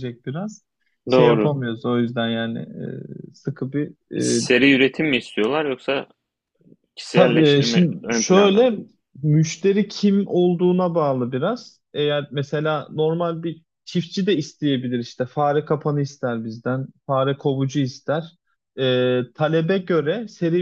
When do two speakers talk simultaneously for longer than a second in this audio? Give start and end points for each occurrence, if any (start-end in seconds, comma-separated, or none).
7.1-8.7